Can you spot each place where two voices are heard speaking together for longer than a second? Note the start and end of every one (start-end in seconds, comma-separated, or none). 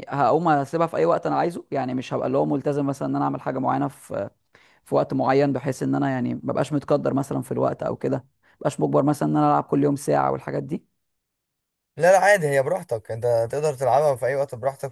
none